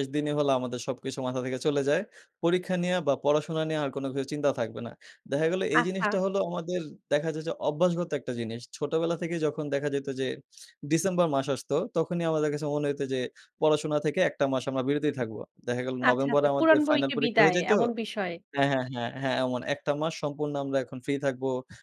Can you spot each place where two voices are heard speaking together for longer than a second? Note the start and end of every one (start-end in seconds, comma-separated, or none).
16.1-17.7